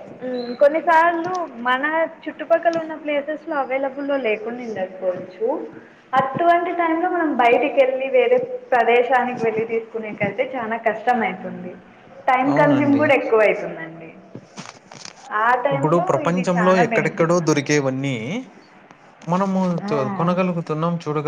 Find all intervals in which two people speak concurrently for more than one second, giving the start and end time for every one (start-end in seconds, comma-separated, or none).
15.7-17.8